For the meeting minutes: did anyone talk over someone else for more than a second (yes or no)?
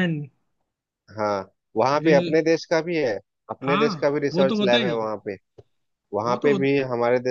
yes